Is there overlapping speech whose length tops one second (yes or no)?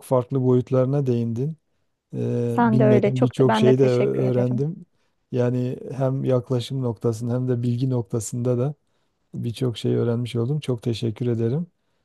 yes